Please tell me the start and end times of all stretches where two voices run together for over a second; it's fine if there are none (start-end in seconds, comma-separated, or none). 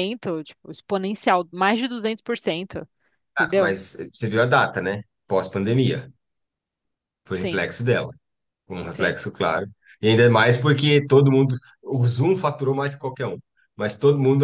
none